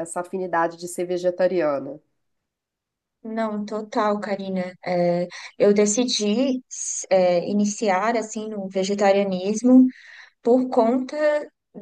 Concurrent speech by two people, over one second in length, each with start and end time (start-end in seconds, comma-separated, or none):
none